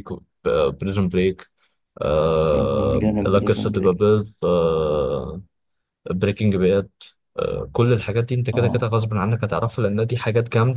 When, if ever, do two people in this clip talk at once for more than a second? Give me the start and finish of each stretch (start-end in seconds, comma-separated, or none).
2.6-4.1